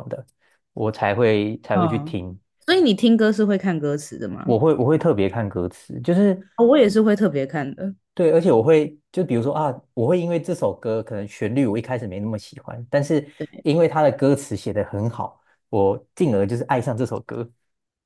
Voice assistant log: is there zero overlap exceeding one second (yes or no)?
yes